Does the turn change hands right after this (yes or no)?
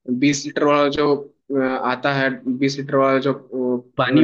no